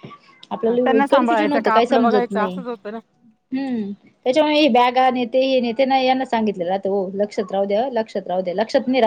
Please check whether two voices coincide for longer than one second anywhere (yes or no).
yes